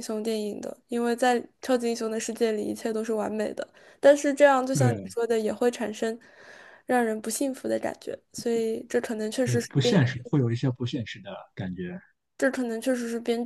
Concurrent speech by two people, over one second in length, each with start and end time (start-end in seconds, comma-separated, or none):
none